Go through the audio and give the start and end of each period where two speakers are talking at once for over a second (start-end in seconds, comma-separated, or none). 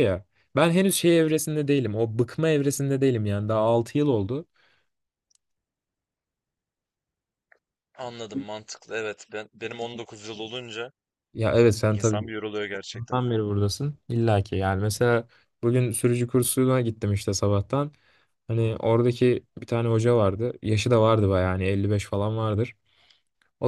none